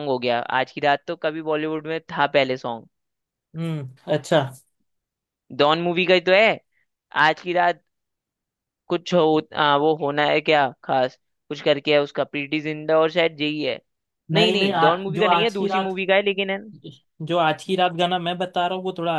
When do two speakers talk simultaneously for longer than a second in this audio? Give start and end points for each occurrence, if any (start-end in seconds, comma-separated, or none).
14.3-15.9